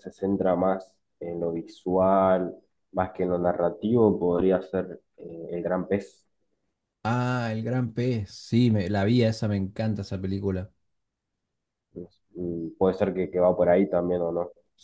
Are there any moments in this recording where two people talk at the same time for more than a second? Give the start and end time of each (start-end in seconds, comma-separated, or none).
none